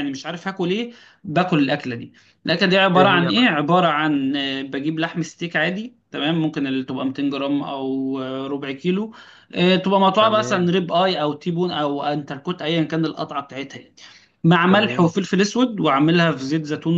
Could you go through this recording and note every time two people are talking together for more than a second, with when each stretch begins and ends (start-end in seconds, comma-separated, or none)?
none